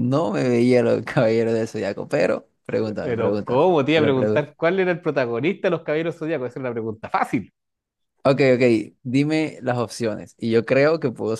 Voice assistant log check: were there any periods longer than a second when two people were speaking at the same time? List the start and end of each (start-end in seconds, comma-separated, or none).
3.0-4.5